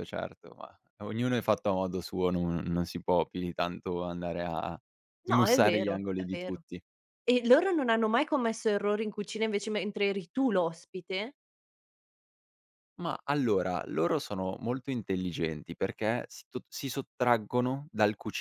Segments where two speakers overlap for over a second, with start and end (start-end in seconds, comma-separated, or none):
5.2-6.6